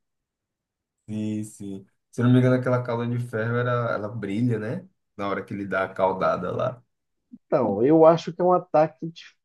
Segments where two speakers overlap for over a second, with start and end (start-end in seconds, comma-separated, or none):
none